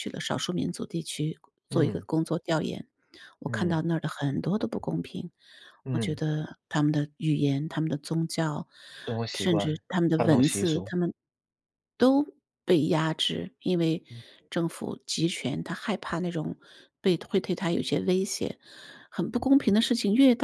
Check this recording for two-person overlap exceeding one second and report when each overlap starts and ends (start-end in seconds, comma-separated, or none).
9.3-10.9